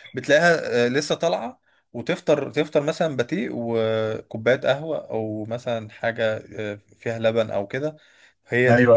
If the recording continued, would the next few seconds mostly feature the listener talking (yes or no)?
no